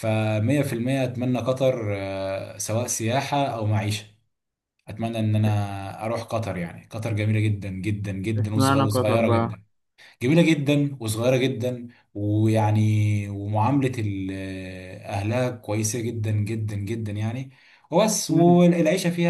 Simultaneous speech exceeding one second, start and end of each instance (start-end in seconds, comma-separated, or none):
8.4-9.6